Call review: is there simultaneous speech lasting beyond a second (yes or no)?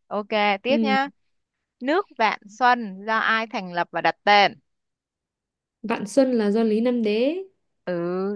no